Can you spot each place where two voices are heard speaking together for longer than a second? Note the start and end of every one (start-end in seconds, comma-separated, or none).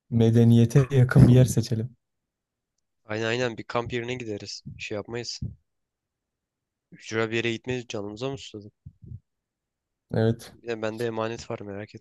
none